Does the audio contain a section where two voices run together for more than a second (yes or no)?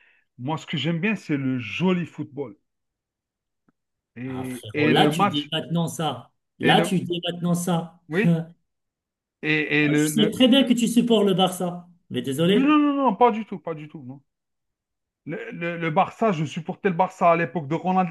yes